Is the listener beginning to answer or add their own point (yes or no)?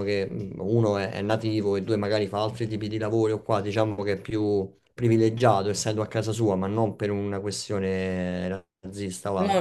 no